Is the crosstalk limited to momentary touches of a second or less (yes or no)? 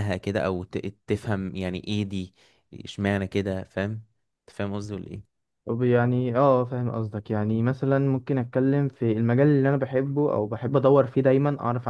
yes